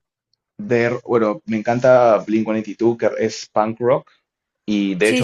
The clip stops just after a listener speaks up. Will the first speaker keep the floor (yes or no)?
yes